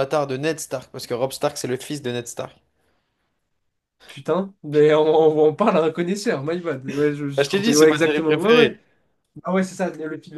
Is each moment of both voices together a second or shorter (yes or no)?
no